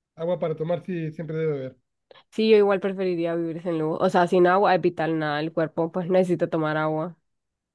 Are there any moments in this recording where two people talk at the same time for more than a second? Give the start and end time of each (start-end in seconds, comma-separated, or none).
none